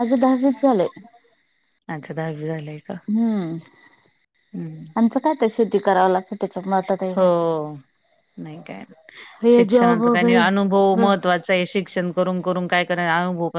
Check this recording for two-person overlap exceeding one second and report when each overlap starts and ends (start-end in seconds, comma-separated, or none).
9.6-11.1